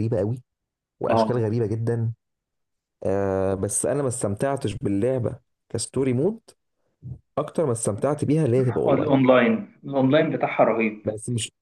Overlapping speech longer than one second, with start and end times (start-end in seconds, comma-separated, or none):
none